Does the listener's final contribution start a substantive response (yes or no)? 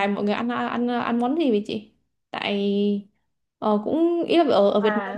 no